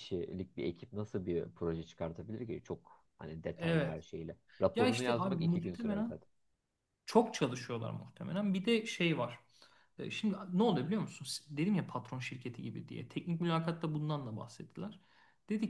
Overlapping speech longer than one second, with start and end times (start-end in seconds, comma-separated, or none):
4.7-6.1